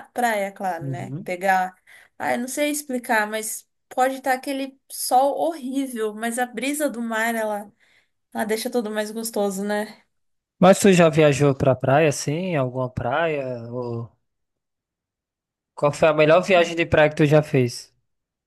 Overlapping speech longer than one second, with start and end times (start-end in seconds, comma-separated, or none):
none